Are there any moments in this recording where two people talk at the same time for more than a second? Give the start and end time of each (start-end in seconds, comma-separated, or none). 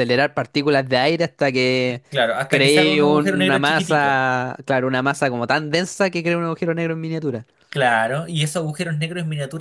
2.5-4.2